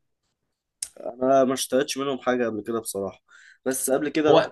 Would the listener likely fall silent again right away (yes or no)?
yes